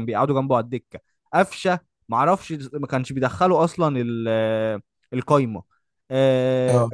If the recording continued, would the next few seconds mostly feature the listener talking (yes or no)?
no